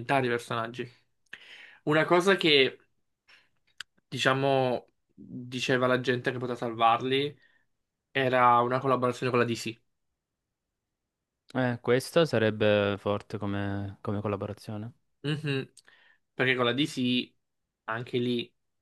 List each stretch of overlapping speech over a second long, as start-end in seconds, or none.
none